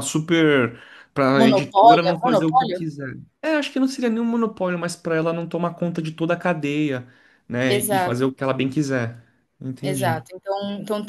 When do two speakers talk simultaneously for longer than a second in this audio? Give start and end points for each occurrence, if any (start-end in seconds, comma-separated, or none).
1.4-2.8